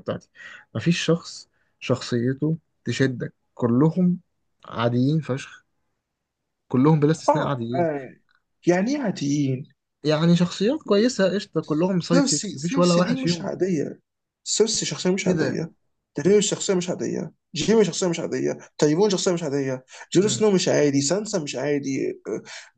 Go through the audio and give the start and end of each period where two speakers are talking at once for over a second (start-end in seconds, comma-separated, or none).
12.1-13.5